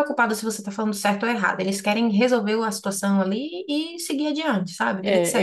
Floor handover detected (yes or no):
yes